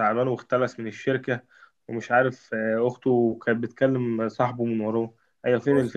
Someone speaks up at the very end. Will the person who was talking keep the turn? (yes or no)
no